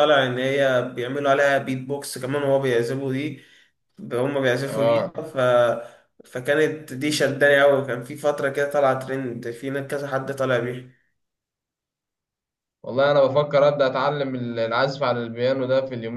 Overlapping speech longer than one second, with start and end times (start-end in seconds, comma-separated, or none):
none